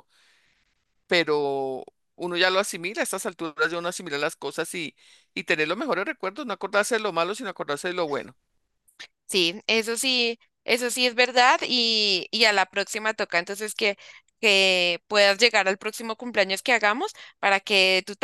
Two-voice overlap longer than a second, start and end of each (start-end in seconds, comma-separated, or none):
none